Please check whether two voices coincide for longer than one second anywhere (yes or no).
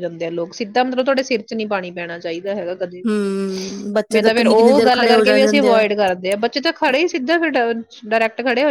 yes